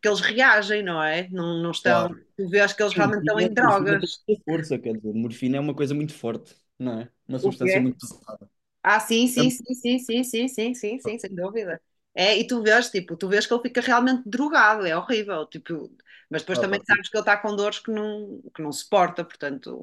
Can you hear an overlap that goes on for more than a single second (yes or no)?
yes